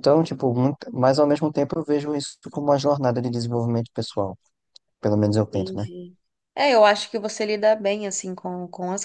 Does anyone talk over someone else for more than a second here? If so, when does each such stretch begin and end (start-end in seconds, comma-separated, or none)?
none